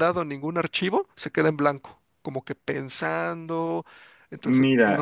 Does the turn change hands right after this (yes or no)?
yes